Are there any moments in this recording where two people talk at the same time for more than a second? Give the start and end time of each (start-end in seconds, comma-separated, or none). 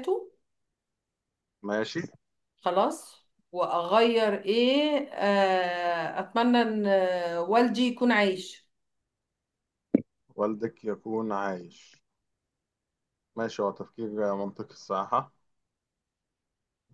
none